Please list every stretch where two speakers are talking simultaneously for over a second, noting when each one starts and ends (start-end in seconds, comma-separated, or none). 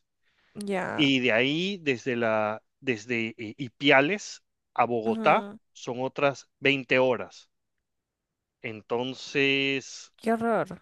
none